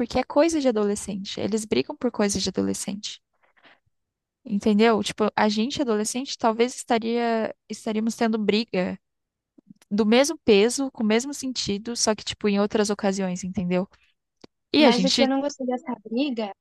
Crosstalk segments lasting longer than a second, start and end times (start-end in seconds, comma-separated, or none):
none